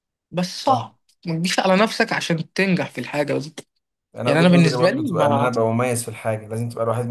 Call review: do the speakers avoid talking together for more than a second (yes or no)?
no